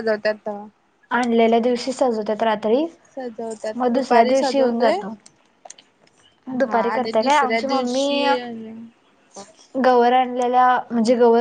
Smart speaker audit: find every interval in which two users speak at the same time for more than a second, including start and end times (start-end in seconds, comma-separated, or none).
3.8-5.0, 6.6-8.2